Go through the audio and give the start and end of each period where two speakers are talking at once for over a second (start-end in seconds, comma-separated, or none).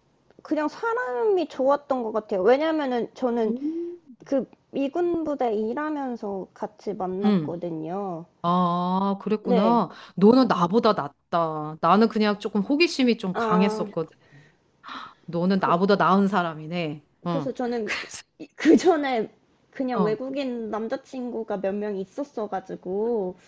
none